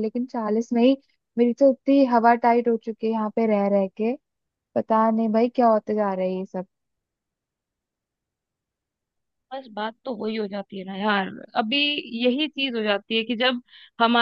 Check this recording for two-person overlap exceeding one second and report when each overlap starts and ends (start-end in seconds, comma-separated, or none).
none